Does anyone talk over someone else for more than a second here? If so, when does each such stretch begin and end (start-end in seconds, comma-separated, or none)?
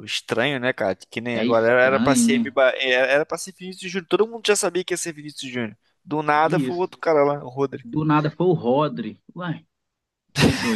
1.3-2.5